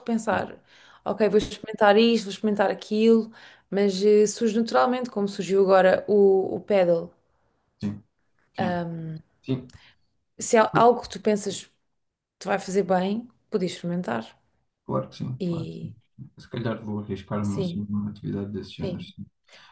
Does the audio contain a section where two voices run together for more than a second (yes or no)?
no